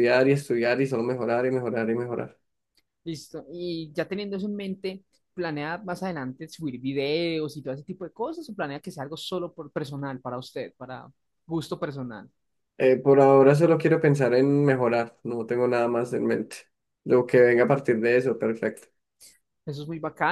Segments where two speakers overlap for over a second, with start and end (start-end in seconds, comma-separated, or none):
none